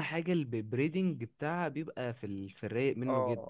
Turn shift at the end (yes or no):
yes